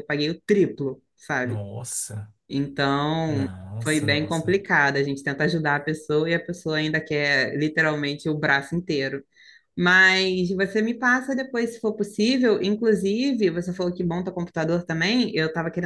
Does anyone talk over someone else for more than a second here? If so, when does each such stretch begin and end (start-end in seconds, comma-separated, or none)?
3.3-4.6